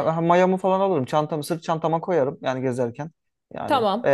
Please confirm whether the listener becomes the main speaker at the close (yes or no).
no